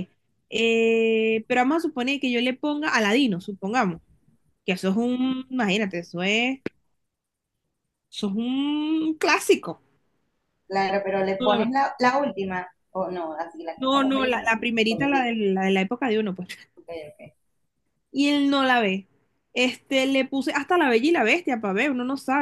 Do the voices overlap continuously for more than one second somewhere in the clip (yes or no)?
yes